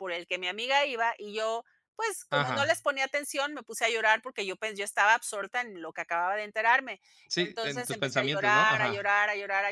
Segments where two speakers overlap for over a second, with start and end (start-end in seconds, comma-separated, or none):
7.5-9.1